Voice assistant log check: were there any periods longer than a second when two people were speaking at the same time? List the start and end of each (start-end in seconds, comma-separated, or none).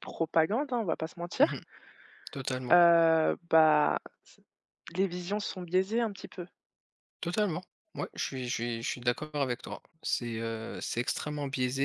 none